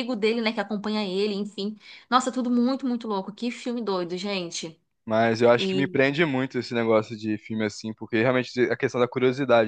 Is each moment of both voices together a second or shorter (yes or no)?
yes